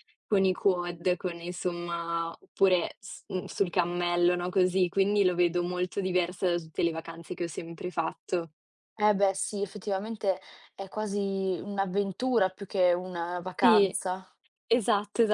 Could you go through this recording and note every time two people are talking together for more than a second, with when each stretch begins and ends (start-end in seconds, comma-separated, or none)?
none